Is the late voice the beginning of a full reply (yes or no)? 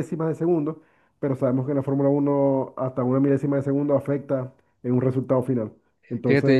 yes